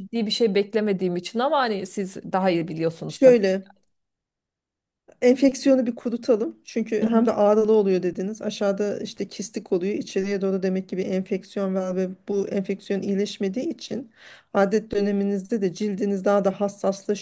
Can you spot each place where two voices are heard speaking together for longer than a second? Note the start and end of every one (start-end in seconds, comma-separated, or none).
none